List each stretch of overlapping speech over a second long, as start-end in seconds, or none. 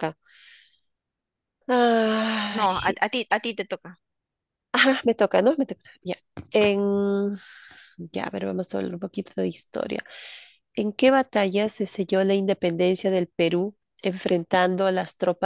none